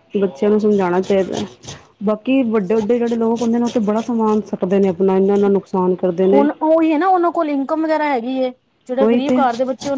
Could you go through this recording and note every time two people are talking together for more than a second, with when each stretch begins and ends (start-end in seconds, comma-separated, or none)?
none